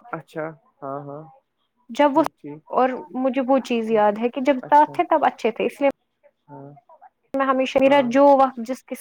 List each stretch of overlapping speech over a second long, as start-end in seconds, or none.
none